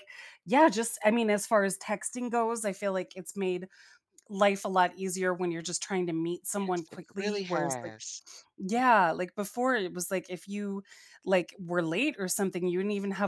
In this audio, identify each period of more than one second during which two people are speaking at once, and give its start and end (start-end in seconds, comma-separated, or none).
6.6-7.9